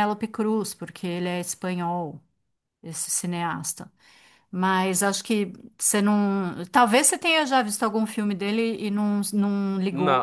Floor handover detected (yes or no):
yes